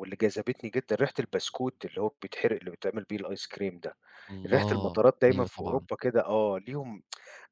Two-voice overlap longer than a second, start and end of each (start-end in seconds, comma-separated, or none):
4.5-5.9